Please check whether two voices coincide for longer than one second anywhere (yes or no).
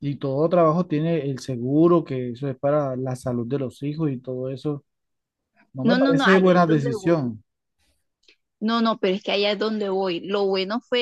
yes